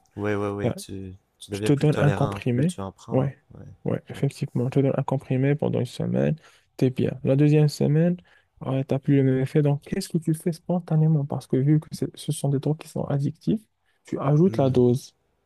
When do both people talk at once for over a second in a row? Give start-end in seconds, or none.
1.5-3.4